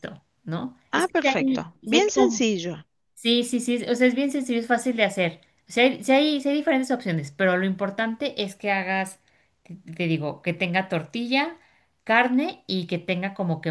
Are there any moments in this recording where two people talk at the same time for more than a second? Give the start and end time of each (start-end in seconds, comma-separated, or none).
0.9-2.5